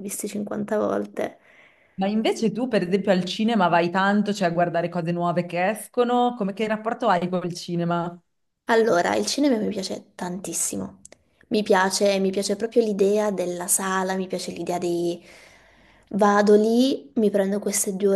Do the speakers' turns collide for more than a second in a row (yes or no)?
no